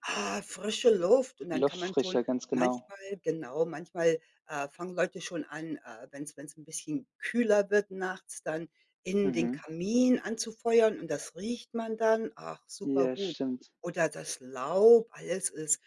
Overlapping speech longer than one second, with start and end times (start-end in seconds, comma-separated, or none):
1.5-2.9